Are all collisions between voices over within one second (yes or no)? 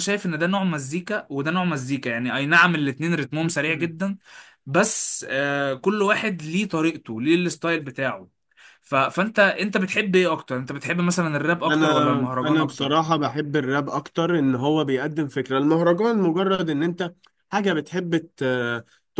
no